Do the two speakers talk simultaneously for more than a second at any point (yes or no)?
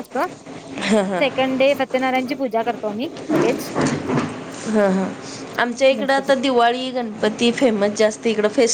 no